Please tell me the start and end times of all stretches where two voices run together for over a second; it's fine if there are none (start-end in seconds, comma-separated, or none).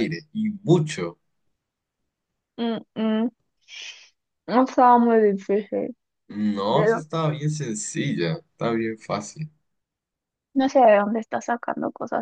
none